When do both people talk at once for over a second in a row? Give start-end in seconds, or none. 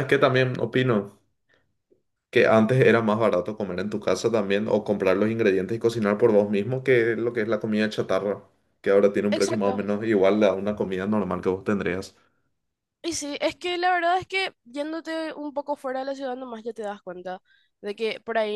none